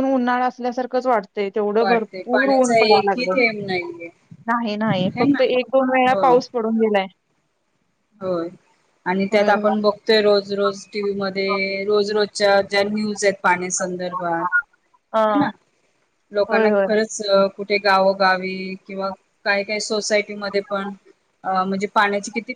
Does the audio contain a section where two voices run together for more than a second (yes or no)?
yes